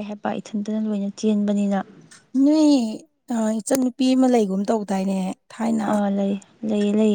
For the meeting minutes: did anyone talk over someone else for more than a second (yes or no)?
no